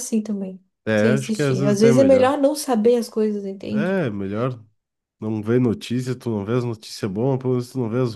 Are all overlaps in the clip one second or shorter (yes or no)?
no